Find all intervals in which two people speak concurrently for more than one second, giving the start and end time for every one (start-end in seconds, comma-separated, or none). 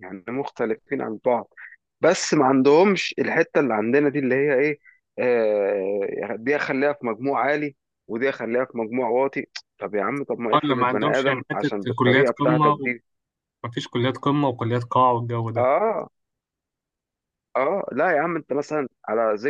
10.5-12.8